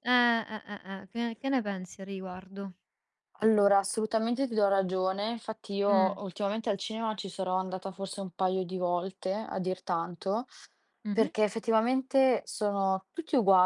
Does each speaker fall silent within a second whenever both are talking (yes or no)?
yes